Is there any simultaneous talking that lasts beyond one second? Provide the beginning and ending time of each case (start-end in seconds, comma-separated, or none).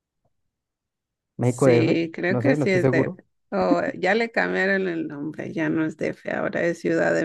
1.4-3.1